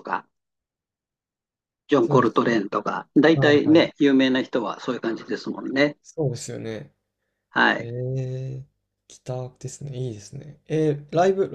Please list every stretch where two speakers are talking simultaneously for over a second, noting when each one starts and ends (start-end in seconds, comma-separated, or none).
none